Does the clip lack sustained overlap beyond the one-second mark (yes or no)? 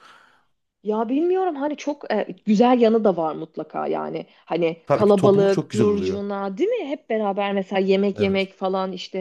no